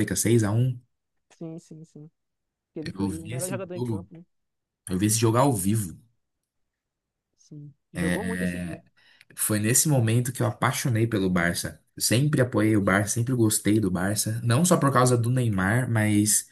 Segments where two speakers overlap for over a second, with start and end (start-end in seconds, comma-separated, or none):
2.8-4.1